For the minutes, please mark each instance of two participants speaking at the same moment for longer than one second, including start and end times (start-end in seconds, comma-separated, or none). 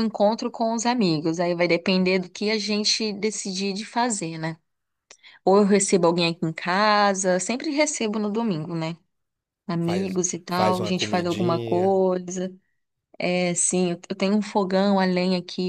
9.8-11.9